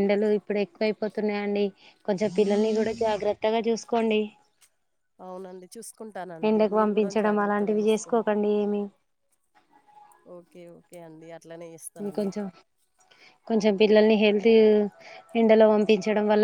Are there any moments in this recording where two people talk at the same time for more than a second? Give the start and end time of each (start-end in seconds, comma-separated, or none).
6.5-8.3